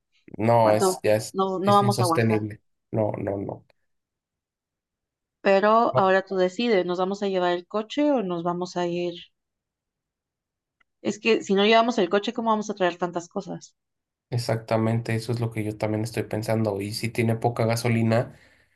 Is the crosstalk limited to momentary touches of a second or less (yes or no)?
no